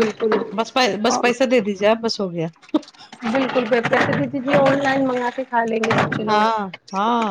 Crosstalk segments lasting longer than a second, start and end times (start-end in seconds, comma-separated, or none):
none